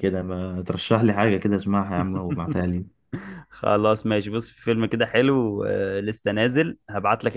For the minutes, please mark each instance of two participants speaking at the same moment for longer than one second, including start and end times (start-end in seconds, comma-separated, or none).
none